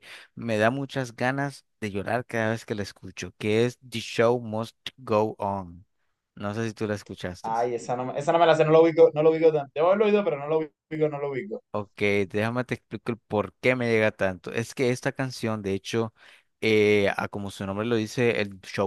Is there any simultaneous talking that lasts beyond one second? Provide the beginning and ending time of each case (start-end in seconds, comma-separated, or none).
none